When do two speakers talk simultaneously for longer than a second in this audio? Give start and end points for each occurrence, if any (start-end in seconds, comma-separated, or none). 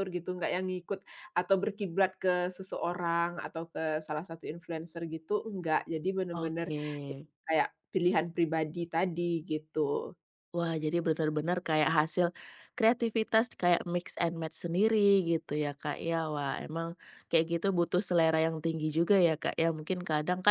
none